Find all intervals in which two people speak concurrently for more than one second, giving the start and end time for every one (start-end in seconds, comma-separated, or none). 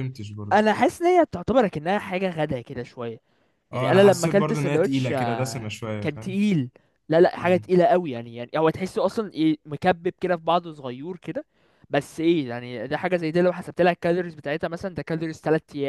3.7-6.4